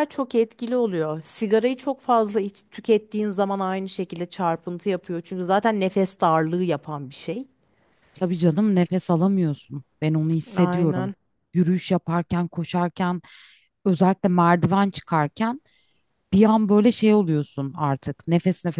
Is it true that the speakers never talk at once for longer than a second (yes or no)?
yes